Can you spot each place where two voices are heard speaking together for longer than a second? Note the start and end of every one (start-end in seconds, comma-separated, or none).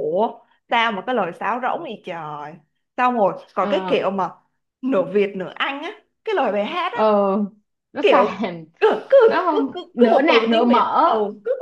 9.3-11.0